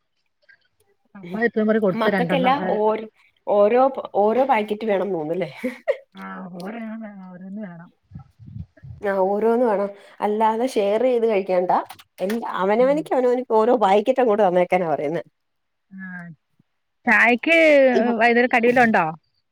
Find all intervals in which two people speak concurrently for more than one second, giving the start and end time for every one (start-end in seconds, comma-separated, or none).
none